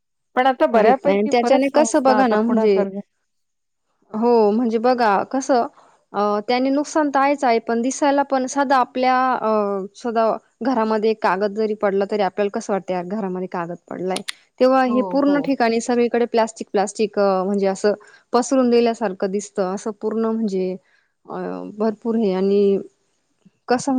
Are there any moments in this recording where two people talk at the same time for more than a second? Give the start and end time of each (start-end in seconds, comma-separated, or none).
0.8-2.8